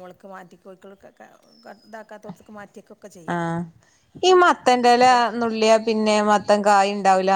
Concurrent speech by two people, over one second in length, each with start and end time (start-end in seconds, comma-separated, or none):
none